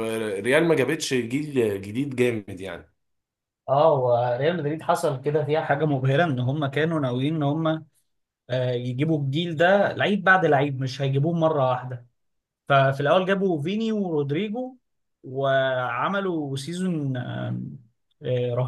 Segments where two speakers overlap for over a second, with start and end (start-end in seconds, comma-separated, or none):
none